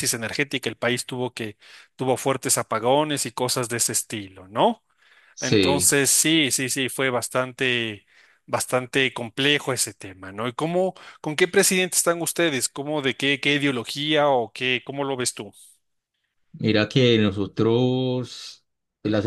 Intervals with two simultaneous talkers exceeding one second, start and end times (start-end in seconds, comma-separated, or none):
none